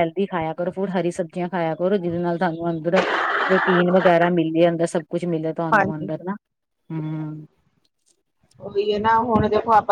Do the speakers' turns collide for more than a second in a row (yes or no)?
no